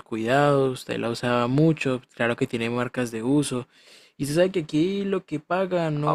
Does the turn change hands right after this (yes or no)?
yes